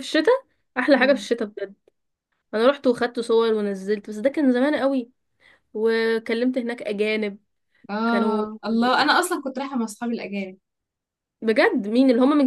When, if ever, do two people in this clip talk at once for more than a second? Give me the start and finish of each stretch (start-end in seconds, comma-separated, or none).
none